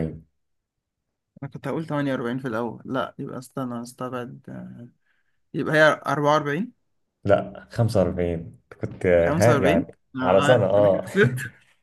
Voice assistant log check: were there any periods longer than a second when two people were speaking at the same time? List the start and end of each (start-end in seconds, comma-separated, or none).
9.2-11.0